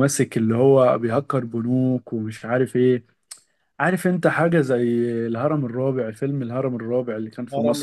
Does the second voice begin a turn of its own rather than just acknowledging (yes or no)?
yes